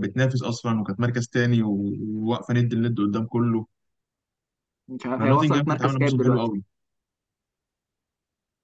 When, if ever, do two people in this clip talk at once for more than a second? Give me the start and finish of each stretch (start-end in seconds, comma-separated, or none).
5.2-6.5